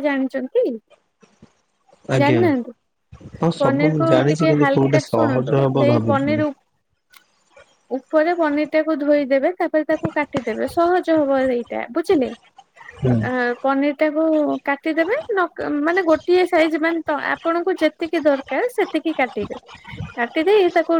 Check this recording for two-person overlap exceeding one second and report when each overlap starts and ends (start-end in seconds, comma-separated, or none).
3.6-6.4